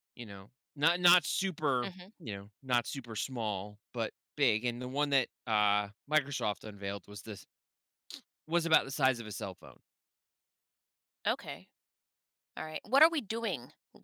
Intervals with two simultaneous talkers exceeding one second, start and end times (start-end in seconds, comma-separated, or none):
none